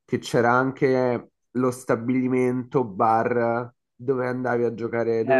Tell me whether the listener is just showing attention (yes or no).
no